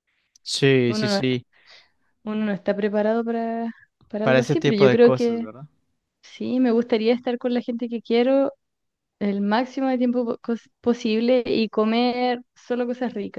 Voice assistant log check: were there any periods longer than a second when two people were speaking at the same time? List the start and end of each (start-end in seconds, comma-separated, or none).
4.2-5.4